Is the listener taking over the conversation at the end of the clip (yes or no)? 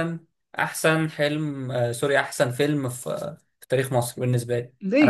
yes